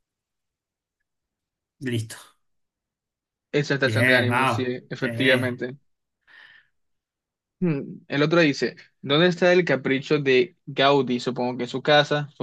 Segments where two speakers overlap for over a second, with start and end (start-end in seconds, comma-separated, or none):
3.9-5.6